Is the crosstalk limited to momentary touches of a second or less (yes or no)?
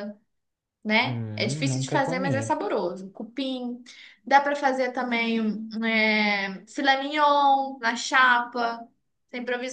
no